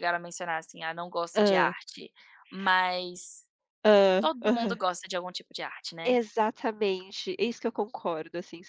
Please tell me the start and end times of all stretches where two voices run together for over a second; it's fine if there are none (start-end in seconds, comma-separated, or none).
none